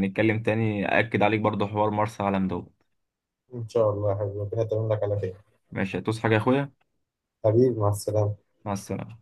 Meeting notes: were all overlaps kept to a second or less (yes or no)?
yes